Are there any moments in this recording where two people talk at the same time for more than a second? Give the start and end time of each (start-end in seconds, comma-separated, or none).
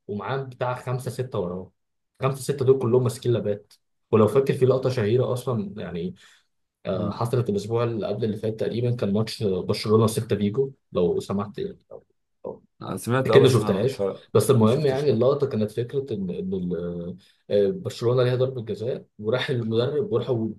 13.2-15.2